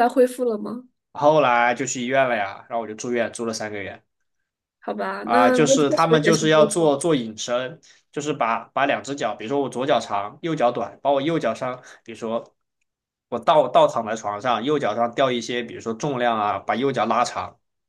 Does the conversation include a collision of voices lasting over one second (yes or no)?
yes